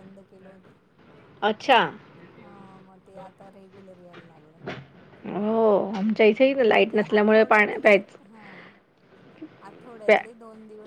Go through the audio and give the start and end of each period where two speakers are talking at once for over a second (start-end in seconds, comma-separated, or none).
6.2-7.9